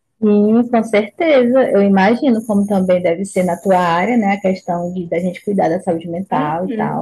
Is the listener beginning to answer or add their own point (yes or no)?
yes